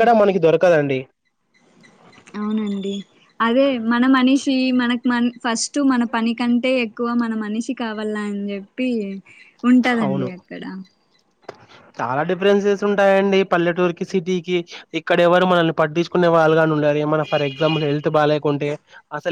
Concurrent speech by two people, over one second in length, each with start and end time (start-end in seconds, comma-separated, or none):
none